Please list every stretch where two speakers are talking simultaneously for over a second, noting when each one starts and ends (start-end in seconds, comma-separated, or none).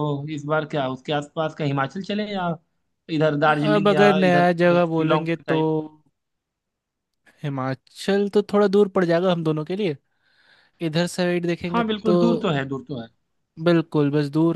3.8-5.6